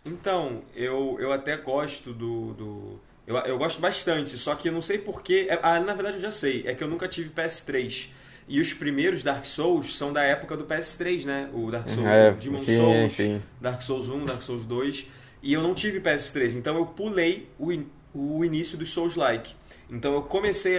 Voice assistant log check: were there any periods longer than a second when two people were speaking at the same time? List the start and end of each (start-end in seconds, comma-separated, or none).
11.8-13.5